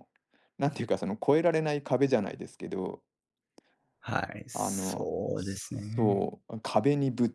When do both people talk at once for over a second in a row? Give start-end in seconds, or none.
4.5-6.3